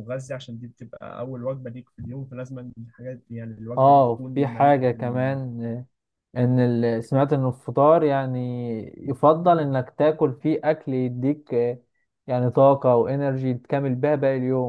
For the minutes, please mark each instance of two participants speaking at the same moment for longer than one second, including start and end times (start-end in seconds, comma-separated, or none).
3.8-5.4